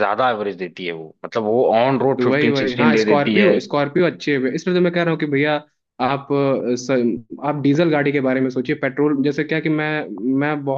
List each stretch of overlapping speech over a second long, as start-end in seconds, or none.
2.2-3.5